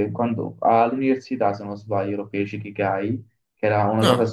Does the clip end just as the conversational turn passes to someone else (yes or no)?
no